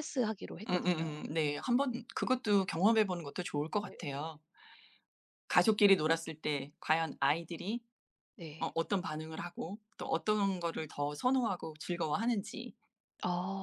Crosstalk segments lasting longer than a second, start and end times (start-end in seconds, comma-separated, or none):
none